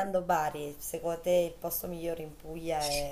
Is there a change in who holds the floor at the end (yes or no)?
yes